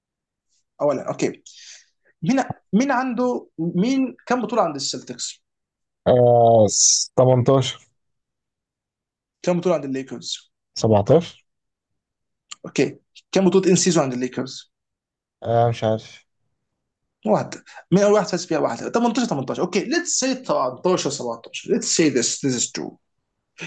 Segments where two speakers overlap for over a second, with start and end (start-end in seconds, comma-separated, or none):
none